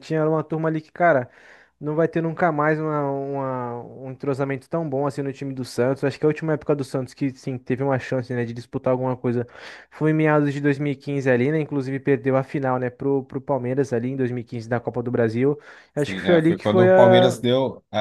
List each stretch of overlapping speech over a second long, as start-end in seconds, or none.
15.9-17.4